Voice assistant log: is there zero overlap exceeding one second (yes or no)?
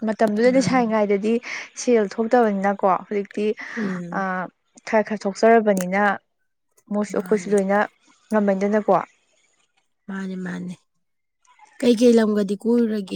yes